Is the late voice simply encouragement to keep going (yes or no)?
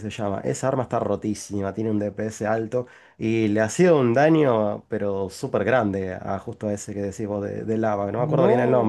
no